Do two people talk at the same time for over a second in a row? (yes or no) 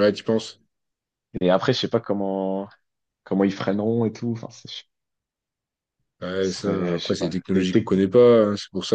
yes